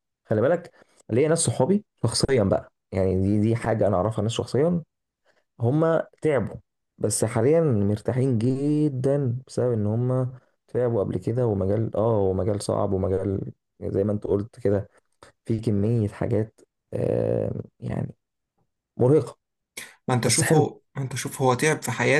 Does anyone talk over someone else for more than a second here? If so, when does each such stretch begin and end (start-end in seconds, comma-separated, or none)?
none